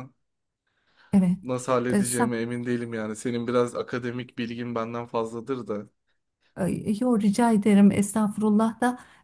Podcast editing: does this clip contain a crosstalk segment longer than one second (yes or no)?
no